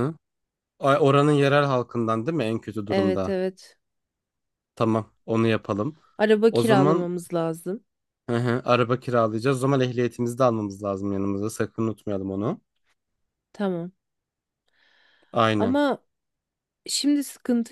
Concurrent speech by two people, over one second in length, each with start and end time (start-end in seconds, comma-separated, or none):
none